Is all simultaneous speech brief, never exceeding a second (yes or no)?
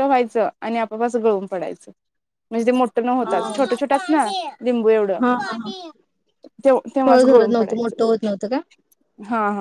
no